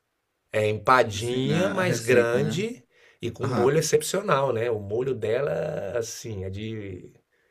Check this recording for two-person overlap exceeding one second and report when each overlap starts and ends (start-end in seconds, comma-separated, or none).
1.1-2.6